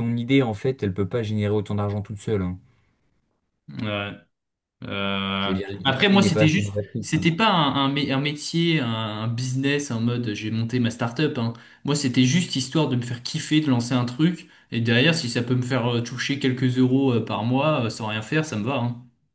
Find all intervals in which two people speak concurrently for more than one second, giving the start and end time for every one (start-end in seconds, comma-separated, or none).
5.4-7.3